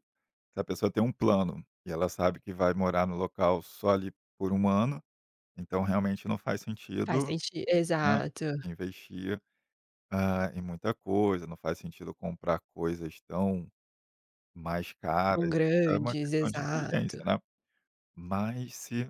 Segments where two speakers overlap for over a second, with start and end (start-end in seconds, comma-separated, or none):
15.3-17.2